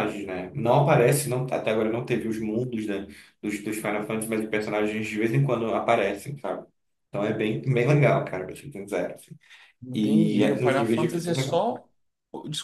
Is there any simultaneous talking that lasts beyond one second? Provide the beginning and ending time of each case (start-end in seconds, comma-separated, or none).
9.9-11.7